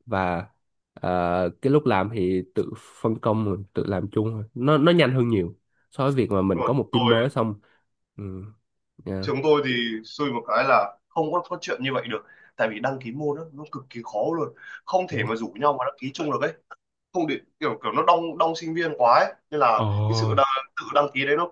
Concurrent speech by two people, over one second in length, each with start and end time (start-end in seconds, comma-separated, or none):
none